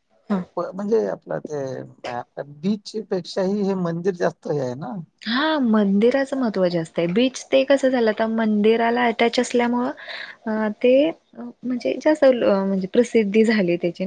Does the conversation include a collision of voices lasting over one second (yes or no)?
no